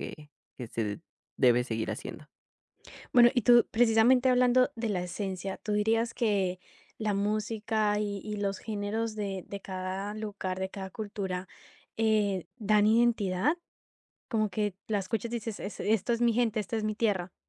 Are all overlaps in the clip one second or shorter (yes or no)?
yes